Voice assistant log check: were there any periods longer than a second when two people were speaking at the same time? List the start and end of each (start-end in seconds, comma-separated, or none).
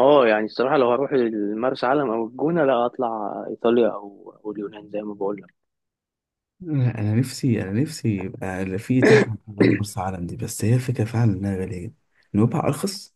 none